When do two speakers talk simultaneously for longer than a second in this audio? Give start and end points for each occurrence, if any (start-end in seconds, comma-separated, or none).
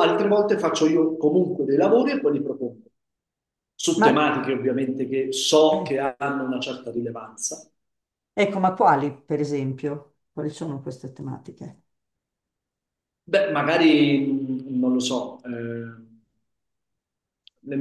none